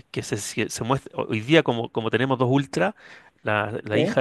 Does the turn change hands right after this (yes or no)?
no